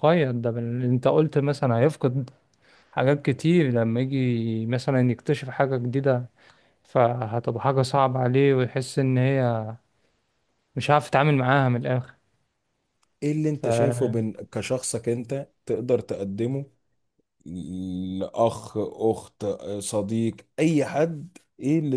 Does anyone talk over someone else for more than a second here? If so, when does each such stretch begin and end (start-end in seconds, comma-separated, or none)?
none